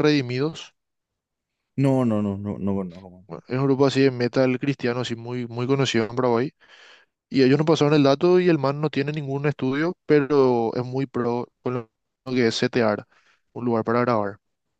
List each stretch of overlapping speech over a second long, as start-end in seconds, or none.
none